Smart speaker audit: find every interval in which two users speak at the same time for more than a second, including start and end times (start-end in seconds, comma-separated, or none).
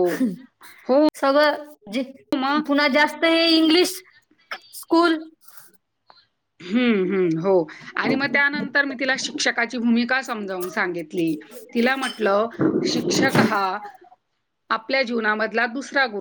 none